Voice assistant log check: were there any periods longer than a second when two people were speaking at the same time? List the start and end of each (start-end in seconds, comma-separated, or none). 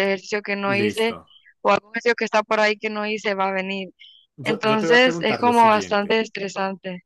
4.4-6.2